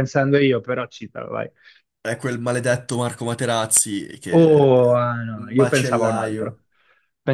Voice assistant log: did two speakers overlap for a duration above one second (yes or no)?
yes